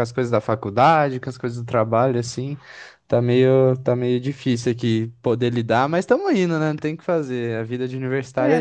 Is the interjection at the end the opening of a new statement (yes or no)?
yes